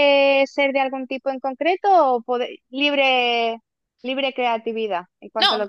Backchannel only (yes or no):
no